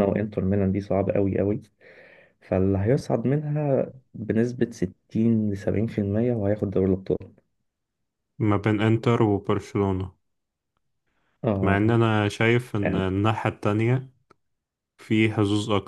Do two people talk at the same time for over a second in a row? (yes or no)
no